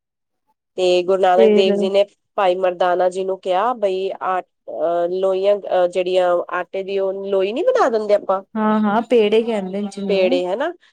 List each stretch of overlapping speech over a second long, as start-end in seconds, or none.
none